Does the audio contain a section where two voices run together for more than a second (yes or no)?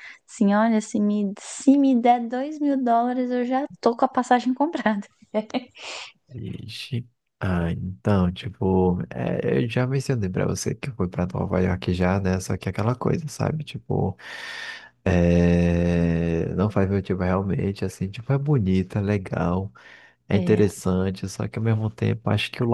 no